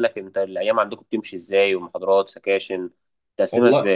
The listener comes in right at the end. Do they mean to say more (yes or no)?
yes